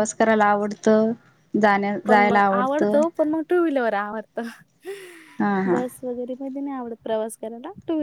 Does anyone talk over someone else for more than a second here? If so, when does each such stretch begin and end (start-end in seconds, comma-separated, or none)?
none